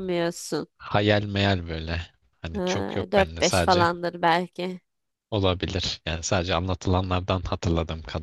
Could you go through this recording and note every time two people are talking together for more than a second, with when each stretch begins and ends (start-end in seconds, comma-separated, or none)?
2.5-3.9